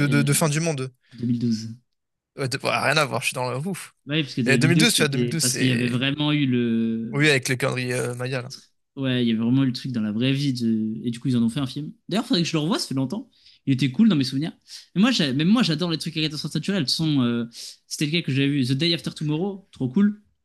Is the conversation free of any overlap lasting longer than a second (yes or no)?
no